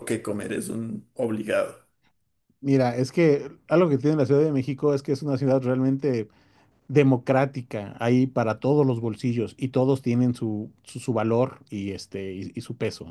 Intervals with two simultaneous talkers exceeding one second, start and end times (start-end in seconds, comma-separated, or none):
none